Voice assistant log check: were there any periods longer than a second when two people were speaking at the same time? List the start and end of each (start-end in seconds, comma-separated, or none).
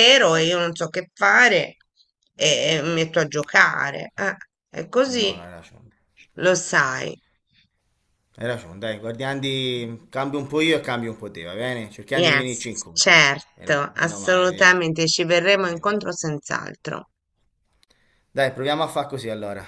12.1-14.7